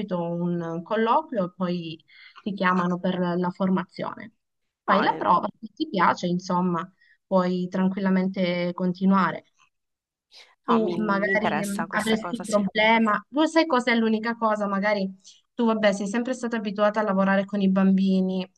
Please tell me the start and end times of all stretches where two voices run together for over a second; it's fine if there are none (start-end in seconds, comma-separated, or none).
10.7-12.7